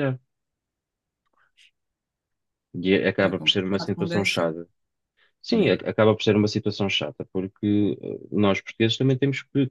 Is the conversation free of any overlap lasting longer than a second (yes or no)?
no